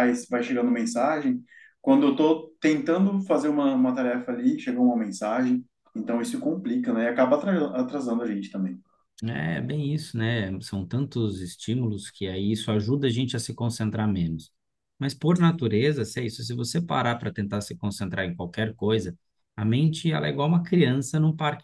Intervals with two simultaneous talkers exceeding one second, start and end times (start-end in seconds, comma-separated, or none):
none